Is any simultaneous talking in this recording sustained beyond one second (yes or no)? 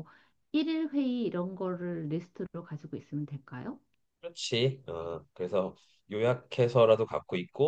no